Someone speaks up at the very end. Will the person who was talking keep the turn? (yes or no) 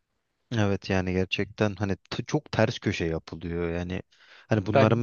yes